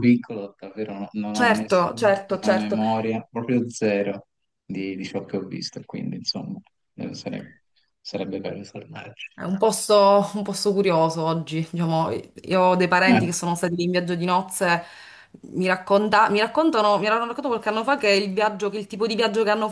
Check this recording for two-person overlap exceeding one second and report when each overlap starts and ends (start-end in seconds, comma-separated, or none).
1.3-2.8